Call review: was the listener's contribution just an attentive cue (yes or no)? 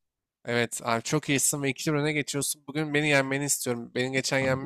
yes